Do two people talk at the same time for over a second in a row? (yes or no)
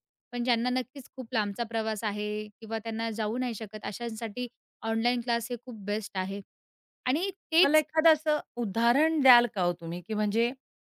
no